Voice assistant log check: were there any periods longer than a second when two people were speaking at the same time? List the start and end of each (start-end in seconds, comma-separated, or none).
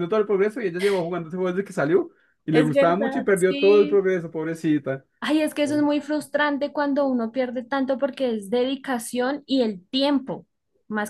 2.5-4.1